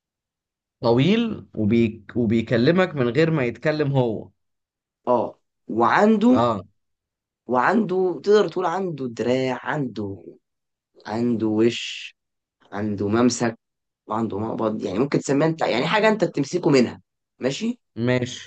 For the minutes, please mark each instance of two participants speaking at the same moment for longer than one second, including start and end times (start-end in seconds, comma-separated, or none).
none